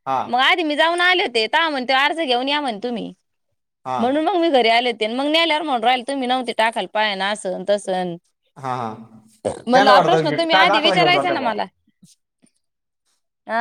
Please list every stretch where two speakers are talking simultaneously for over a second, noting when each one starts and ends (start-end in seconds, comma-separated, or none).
9.7-11.5